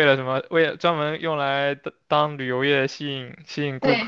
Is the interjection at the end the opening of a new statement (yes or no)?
no